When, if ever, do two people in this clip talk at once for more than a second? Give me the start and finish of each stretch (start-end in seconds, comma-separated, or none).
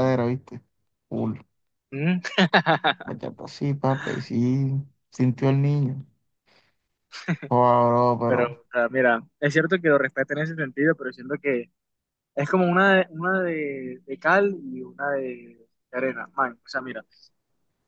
none